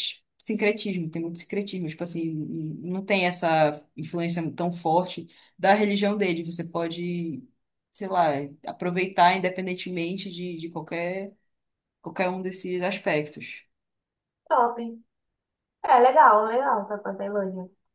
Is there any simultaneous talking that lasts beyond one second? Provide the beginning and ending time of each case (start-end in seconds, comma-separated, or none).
none